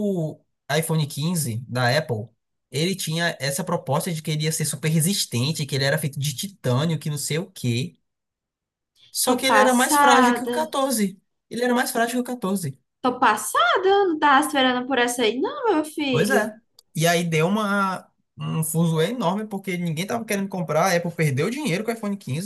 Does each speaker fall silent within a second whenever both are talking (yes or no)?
no